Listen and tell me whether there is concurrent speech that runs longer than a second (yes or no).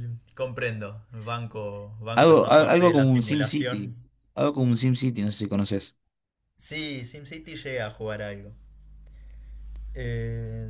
yes